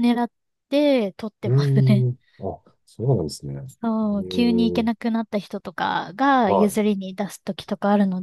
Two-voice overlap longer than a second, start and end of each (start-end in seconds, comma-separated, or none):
3.6-4.9